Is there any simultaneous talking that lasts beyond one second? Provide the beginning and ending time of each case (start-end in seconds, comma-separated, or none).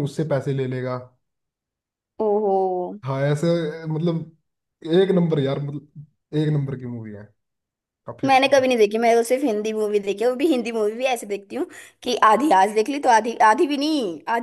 none